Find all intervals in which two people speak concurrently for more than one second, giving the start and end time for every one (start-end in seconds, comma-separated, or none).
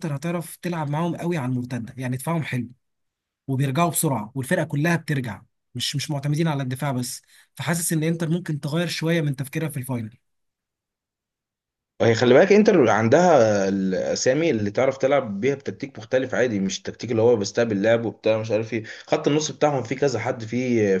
none